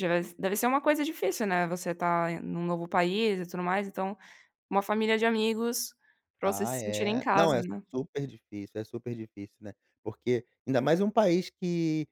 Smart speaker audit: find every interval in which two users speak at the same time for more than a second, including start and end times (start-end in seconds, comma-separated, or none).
6.4-7.8